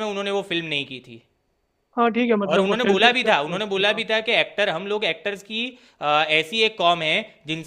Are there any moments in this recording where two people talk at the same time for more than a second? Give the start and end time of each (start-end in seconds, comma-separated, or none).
2.5-4.0